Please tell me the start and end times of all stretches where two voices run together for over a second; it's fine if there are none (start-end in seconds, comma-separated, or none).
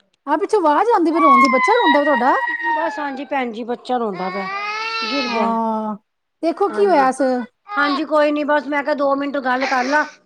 none